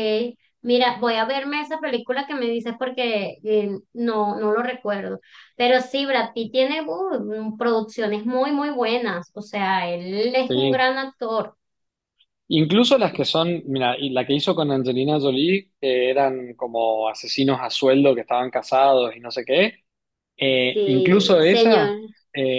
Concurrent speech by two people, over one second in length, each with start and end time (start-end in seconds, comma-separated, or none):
20.7-22.0